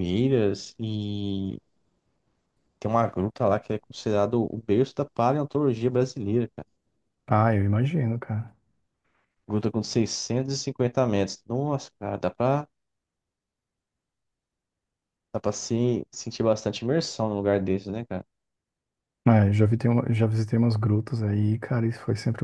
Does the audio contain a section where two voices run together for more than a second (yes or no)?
no